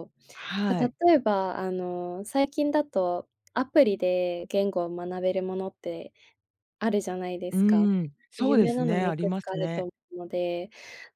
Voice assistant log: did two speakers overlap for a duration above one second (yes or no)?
yes